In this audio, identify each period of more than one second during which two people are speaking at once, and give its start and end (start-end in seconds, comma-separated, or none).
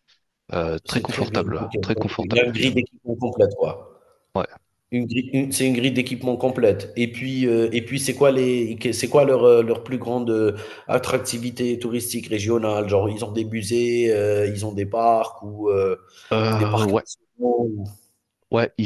0.8-2.7